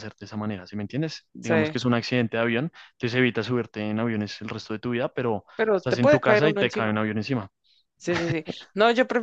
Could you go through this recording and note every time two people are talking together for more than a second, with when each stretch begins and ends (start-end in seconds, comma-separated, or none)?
5.5-7.0